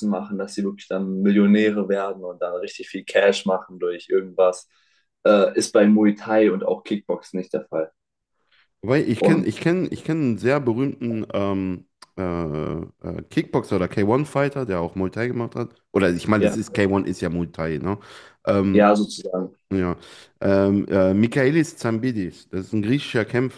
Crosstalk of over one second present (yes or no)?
no